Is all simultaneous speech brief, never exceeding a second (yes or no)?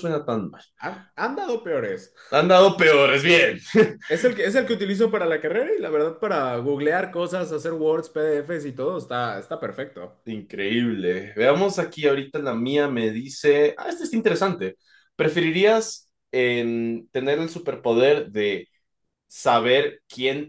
yes